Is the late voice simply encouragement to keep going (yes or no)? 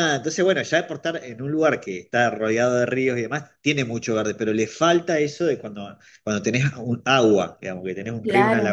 no